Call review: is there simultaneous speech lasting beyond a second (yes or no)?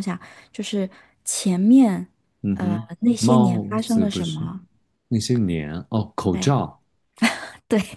yes